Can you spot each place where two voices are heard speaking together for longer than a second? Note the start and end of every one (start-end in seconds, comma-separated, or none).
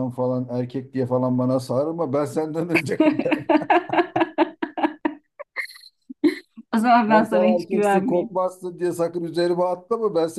7.1-8.3